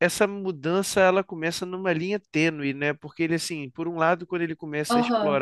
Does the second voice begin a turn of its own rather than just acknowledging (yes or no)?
no